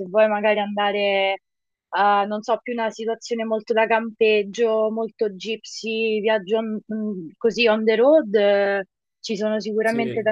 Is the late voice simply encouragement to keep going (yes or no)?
yes